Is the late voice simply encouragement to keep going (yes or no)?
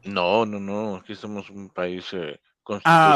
no